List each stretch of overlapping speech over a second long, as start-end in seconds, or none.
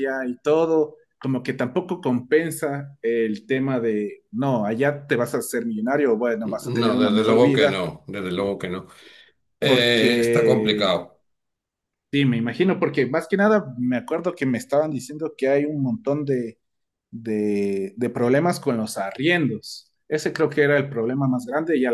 6.4-7.8, 9.6-10.9